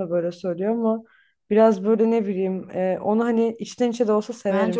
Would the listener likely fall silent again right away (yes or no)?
no